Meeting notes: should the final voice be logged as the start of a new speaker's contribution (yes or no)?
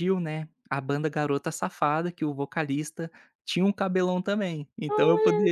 yes